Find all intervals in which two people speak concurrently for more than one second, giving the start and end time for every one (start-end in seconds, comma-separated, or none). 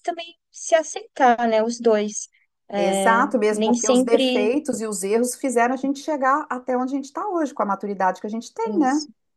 2.8-4.5